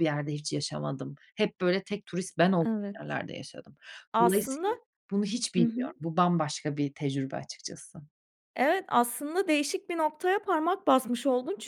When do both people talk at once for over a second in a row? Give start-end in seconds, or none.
none